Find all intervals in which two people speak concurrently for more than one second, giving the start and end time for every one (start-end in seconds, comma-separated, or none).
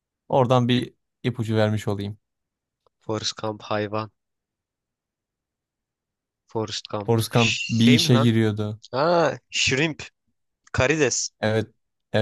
7.1-8.4